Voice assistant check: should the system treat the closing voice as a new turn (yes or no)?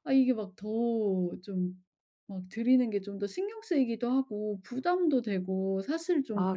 yes